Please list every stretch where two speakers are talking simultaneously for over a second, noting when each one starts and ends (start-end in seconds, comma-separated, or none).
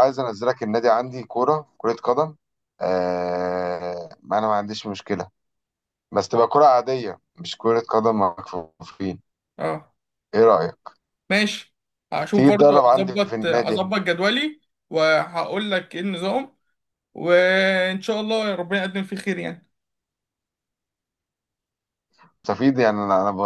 12.3-13.8